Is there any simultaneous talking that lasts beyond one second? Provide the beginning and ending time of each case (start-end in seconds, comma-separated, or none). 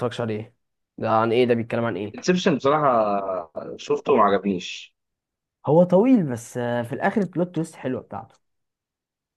none